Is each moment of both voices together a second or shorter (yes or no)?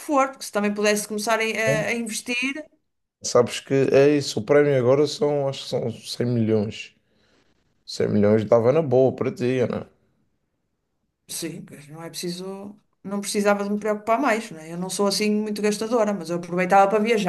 yes